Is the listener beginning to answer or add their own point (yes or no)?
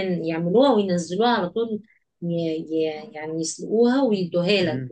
yes